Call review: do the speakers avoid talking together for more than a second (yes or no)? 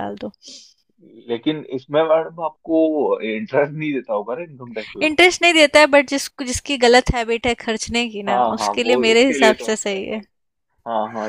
no